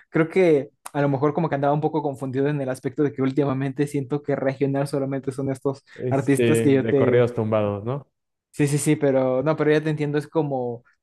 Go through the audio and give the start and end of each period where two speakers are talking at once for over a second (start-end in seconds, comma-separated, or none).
6.0-7.3